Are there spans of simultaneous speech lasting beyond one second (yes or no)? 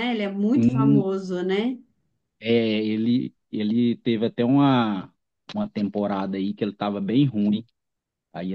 no